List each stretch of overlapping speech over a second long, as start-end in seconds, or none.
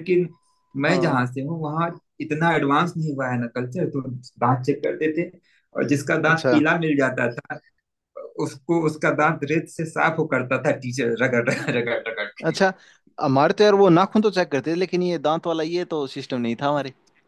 none